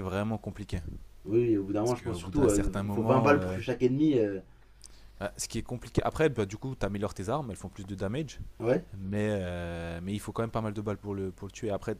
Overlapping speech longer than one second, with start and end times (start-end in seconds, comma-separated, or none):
1.8-3.6